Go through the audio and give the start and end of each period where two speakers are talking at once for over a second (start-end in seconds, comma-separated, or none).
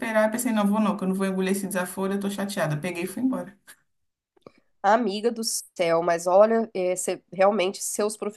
none